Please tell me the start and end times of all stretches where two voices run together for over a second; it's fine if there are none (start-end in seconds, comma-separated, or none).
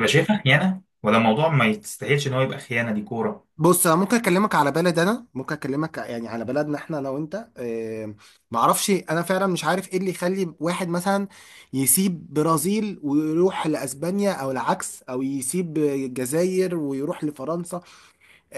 none